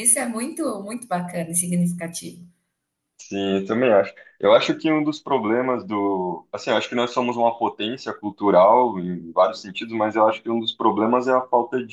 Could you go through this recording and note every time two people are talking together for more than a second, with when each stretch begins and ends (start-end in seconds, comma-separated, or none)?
none